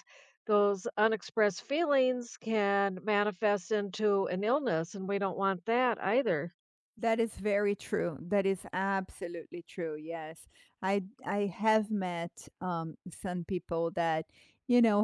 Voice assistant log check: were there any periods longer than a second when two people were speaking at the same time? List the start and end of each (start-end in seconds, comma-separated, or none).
none